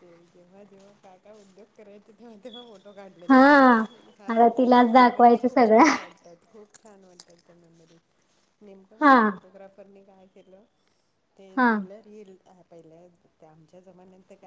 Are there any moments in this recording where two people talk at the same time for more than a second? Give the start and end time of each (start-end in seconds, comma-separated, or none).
4.3-5.8